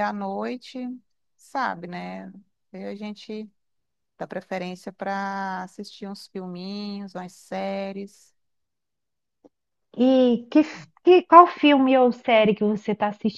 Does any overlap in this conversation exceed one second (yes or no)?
no